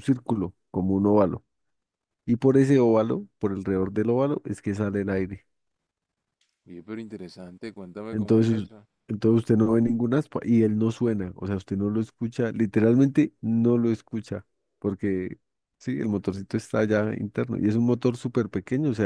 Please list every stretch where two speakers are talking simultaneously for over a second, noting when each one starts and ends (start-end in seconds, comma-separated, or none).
none